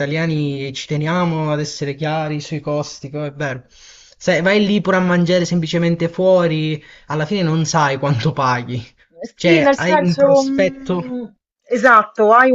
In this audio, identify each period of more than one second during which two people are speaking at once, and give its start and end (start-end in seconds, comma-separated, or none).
9.4-11.0